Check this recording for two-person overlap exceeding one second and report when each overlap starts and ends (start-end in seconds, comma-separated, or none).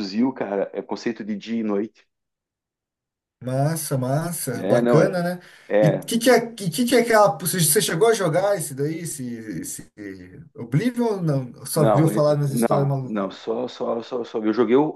11.7-13.3